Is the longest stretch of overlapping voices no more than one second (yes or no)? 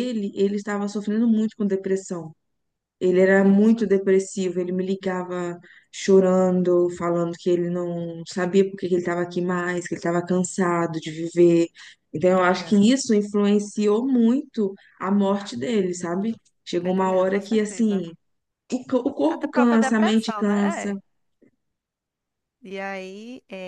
no